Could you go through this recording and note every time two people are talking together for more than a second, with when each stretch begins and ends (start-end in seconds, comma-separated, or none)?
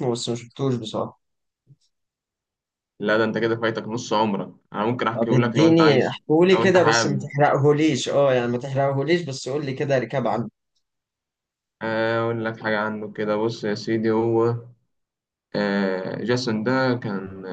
5.1-7.3